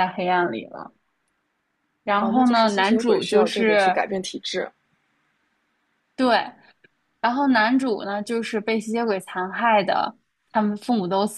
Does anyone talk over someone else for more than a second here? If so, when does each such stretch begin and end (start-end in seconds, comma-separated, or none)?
2.2-4.0